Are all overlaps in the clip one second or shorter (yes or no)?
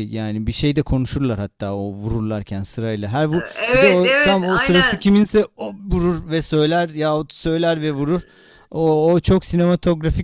no